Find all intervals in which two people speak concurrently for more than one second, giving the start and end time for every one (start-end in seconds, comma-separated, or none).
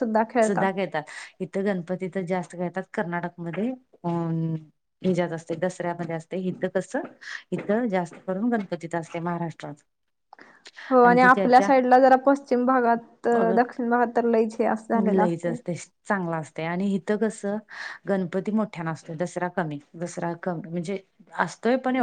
none